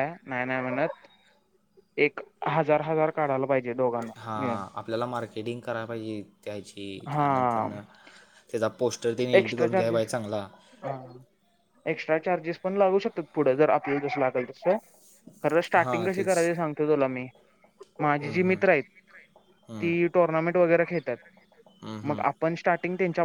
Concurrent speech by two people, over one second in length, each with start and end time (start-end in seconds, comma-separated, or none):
none